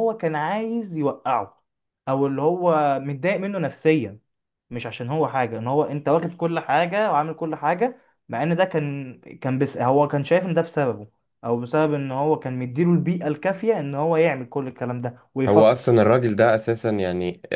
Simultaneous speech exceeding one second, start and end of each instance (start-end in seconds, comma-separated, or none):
none